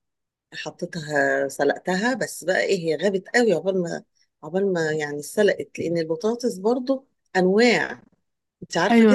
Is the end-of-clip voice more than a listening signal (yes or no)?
yes